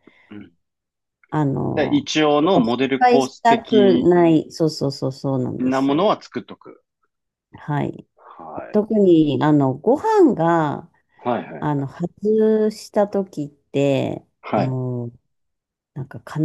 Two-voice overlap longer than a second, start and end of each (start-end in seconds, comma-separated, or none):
1.8-4.1